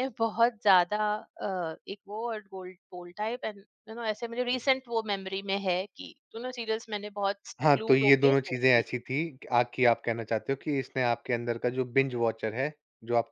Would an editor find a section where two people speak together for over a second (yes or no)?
yes